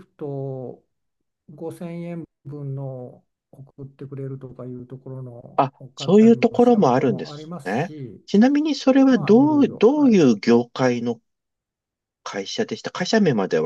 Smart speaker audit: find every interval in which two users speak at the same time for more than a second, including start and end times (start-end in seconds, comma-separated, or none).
5.5-8.2, 9.1-10.4